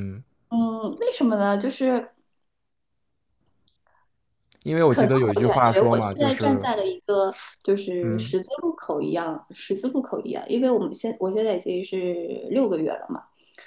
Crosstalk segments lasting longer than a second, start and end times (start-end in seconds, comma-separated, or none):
4.8-6.7